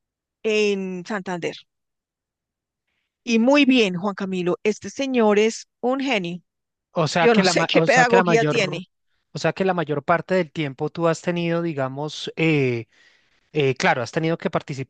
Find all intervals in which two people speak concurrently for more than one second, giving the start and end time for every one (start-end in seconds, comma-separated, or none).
7.2-8.8